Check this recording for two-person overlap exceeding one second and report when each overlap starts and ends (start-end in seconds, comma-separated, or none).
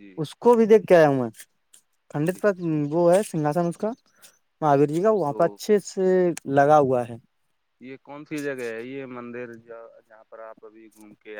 none